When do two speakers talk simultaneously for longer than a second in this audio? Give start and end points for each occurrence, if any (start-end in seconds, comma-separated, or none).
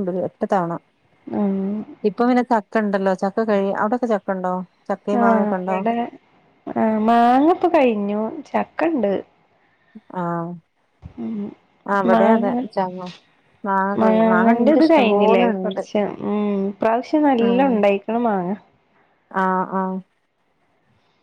14.0-15.8